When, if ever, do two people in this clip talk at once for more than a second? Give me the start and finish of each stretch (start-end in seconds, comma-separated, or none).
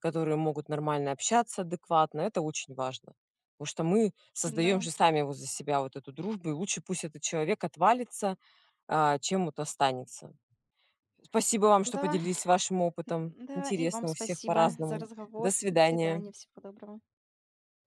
13.1-16.3